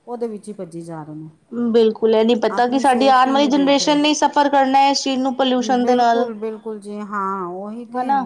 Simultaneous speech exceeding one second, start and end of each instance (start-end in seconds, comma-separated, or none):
2.6-4.0